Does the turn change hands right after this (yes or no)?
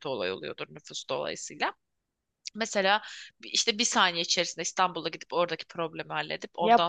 yes